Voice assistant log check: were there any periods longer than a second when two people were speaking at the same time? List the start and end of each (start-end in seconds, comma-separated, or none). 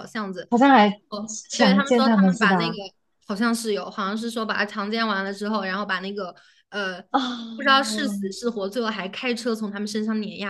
1.5-2.8